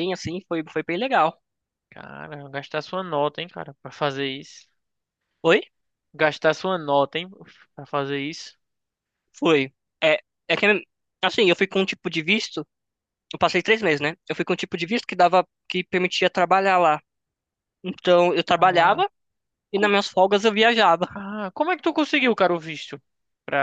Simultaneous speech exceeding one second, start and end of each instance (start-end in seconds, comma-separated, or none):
none